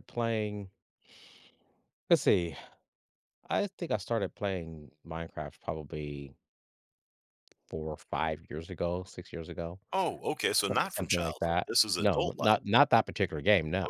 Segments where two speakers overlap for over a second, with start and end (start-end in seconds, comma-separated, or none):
10.7-12.6